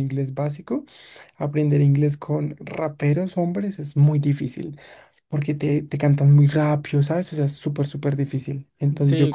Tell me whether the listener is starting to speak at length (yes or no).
no